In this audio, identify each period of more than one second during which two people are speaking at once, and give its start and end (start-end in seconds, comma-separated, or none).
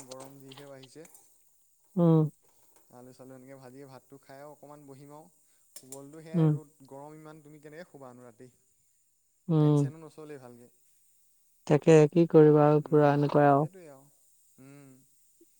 none